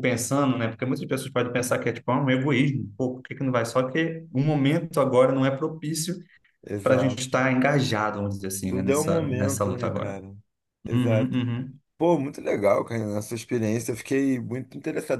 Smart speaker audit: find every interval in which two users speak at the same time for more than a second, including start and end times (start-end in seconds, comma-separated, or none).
8.7-10.2